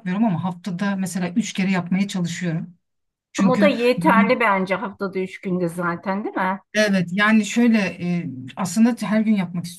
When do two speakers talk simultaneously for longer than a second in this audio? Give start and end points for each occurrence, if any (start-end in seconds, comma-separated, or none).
none